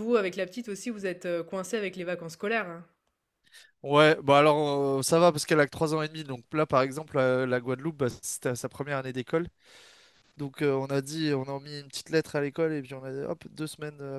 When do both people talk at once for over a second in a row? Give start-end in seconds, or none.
none